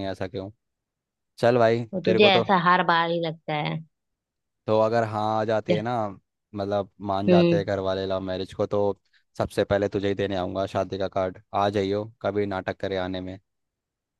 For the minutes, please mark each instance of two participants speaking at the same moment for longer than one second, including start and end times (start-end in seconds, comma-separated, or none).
none